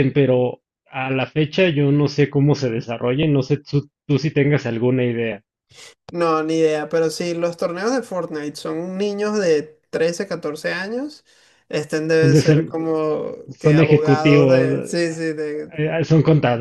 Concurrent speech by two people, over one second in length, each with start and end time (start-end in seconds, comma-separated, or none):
13.5-14.9